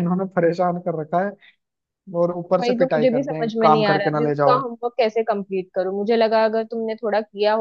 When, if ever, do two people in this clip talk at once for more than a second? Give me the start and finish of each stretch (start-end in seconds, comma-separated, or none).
2.6-4.6